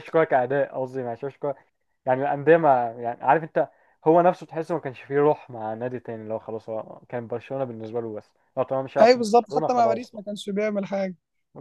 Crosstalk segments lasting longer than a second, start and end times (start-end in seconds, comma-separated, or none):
9.0-10.2